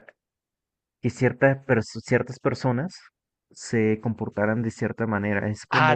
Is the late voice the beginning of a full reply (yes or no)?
yes